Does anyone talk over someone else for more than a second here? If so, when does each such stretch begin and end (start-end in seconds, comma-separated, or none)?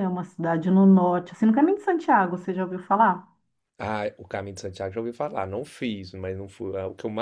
none